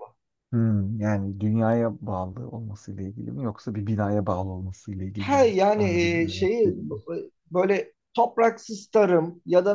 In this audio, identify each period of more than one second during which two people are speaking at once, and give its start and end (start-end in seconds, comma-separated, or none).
5.2-7.0